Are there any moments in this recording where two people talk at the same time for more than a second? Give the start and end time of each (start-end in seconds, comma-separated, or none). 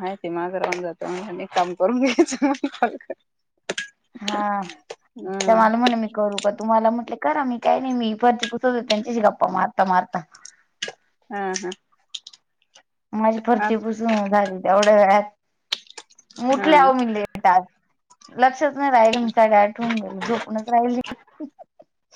none